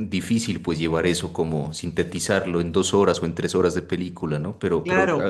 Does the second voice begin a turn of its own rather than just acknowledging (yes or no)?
yes